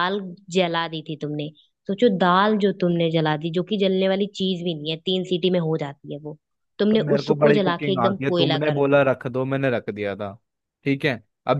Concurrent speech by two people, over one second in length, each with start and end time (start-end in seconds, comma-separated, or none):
6.9-9.0